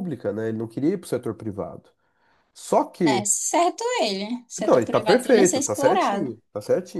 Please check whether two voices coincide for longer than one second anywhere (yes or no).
yes